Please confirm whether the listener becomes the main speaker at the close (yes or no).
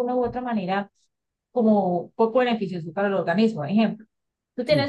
no